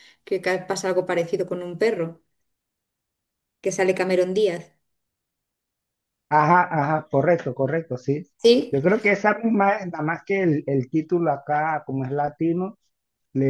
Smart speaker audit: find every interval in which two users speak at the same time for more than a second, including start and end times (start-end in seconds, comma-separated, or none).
none